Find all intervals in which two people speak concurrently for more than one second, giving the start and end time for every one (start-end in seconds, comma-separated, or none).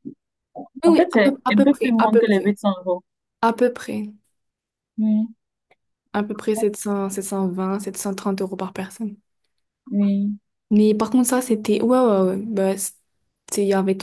0.8-2.5